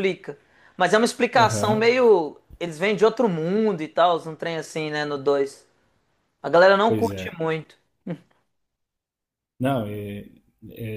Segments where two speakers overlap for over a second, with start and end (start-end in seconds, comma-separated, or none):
none